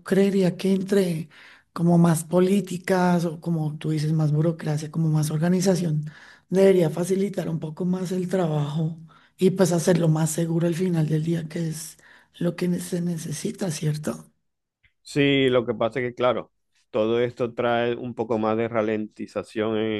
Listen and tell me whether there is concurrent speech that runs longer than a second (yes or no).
no